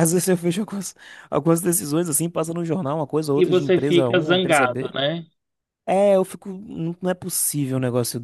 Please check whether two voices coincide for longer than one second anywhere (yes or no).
yes